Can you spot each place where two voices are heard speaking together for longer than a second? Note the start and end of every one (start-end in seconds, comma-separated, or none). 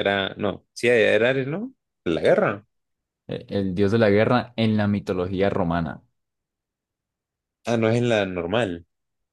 none